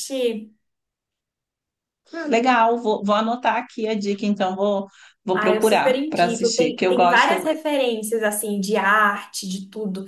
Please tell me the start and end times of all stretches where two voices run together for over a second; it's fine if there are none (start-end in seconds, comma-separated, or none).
5.3-7.4